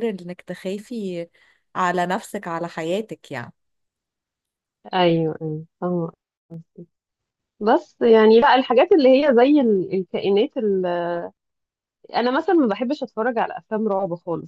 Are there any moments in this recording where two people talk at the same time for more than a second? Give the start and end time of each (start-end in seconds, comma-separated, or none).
none